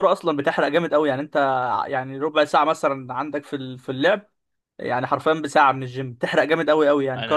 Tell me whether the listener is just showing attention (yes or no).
no